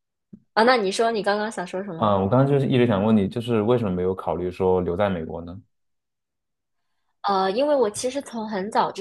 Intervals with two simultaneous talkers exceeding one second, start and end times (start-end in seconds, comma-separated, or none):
none